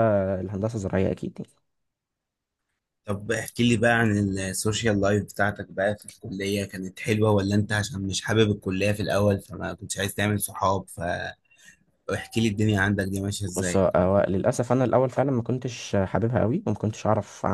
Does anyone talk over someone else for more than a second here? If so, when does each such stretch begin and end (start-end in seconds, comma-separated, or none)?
none